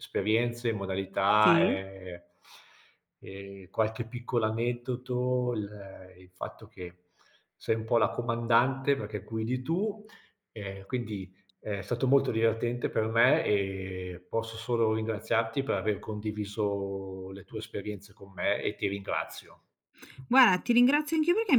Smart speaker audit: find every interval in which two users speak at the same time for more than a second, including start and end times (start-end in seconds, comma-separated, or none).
none